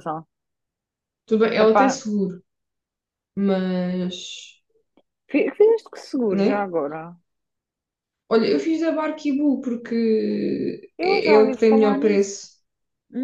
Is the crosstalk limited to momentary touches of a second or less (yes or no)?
no